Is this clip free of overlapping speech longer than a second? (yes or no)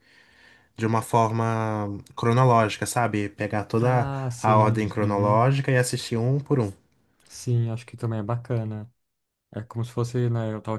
no